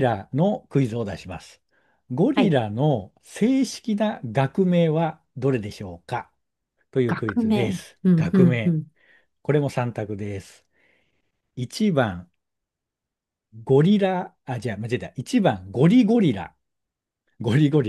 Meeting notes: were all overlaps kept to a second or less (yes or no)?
no